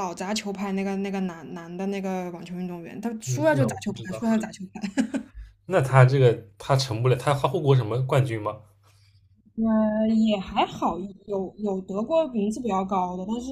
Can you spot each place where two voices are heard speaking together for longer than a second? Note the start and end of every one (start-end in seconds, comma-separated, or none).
3.3-4.5